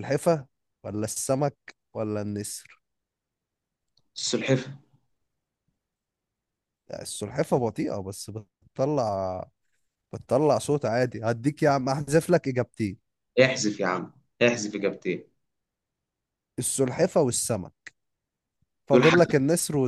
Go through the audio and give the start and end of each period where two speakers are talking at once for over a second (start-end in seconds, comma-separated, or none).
none